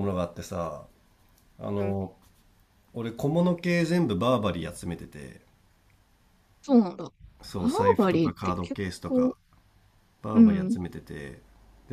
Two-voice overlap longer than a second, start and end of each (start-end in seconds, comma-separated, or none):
7.5-9.4